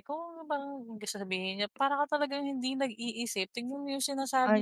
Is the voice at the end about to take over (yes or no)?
no